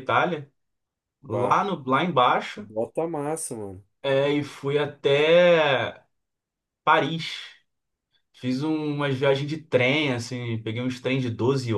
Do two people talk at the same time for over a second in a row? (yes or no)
no